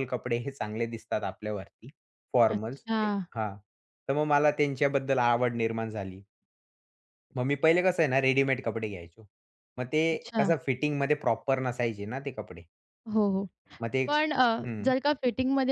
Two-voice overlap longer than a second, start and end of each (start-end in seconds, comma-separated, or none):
none